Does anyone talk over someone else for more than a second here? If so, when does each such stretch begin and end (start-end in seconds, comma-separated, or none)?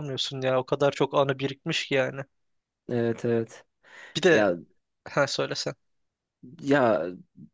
none